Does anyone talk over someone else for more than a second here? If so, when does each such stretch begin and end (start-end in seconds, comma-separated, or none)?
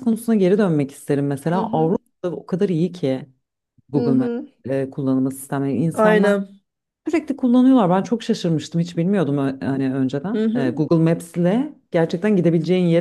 none